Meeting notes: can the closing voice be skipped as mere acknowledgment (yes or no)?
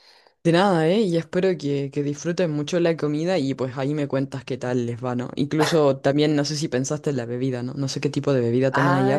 no